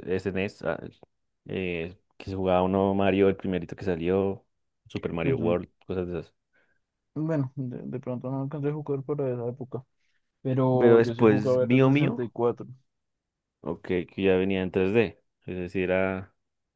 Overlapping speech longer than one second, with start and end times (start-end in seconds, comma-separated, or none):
10.8-12.3